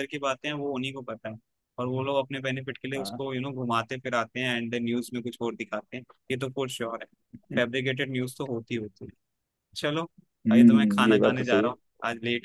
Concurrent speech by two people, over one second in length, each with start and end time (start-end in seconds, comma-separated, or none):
10.5-11.7